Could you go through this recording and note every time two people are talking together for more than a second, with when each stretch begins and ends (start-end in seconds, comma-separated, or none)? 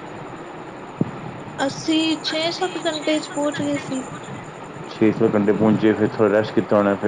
none